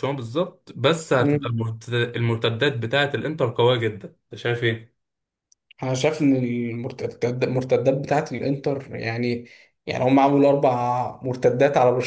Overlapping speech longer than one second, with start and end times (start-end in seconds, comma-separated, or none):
none